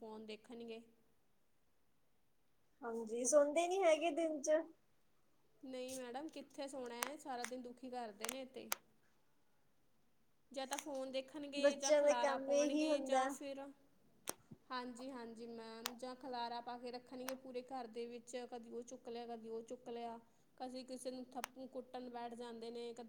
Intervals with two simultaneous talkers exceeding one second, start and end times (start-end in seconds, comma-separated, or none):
11.6-13.3